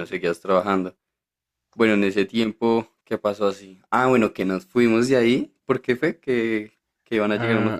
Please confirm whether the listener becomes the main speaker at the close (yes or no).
yes